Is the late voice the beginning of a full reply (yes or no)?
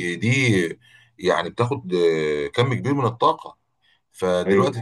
no